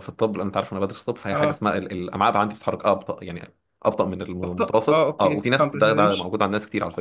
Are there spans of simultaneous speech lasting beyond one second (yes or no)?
yes